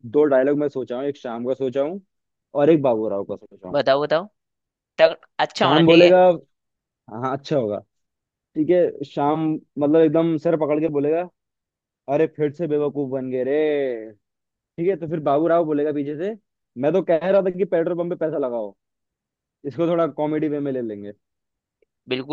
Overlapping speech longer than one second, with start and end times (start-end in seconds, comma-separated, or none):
none